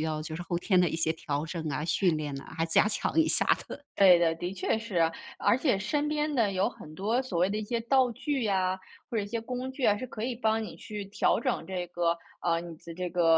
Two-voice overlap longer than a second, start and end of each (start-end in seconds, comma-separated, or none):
none